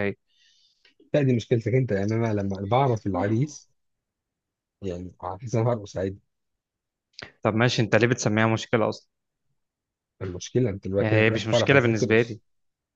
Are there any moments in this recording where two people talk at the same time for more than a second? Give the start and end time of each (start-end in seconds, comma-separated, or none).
11.0-12.4